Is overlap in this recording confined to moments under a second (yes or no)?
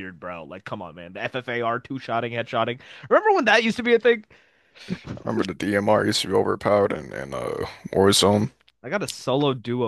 yes